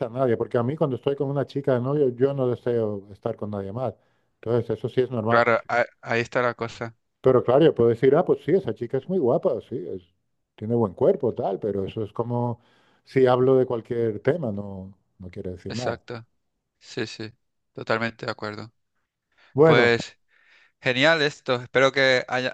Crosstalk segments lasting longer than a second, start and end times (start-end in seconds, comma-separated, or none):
none